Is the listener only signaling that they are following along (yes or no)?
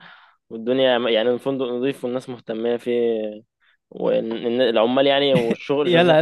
no